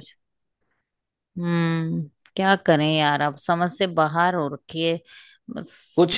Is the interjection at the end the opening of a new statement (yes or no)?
yes